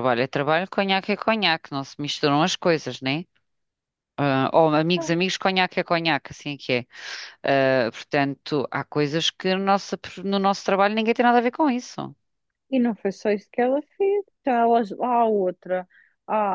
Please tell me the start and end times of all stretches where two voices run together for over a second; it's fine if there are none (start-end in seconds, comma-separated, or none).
none